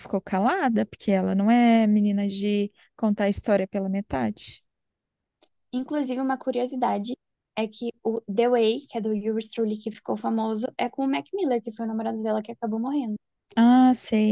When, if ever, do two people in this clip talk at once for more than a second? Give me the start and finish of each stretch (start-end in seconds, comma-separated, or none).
none